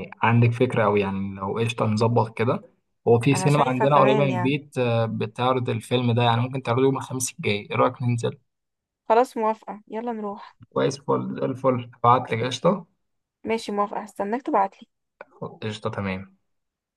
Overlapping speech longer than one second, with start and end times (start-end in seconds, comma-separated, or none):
3.3-4.6